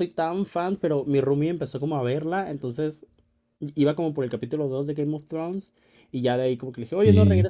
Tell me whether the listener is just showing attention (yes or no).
yes